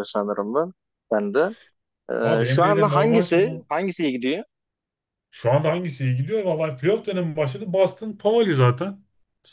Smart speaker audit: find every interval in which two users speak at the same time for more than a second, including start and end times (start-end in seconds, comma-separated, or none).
2.4-3.7